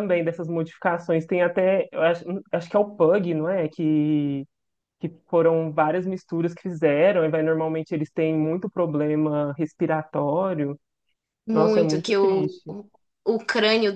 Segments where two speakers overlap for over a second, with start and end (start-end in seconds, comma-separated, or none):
11.5-12.7